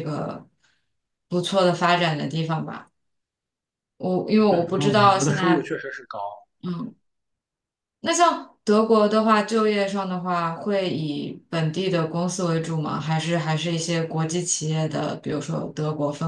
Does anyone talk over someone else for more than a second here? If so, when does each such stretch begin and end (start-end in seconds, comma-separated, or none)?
4.5-5.7